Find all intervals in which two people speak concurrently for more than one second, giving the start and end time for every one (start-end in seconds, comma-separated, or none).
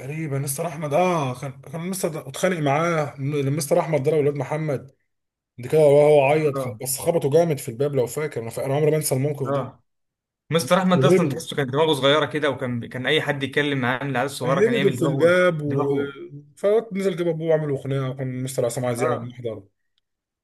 14.4-15.9